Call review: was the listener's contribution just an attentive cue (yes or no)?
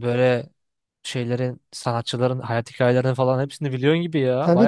no